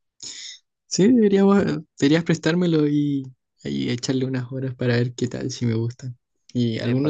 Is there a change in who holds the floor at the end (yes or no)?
yes